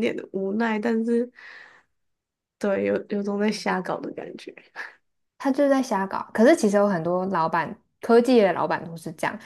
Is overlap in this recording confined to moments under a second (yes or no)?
yes